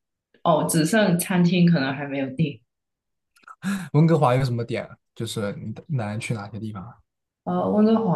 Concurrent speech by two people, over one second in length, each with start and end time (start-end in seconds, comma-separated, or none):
none